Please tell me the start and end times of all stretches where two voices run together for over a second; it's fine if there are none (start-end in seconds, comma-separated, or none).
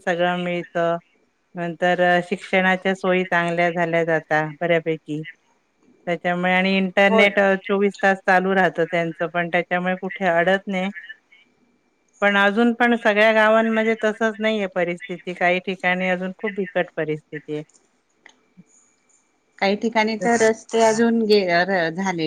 none